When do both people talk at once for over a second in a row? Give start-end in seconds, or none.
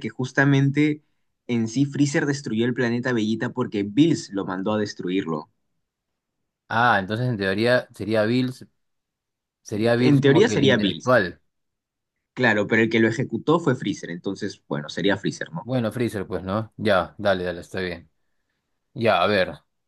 10.0-11.2